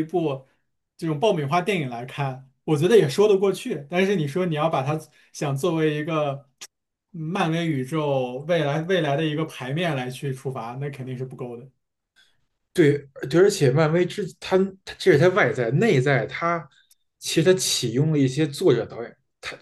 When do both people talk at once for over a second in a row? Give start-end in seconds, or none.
none